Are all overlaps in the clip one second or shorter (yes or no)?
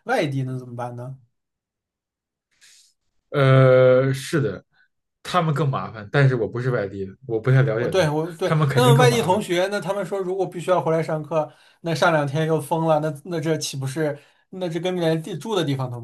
no